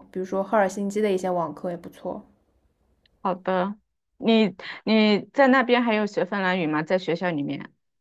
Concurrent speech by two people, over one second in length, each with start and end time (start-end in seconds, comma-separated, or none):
none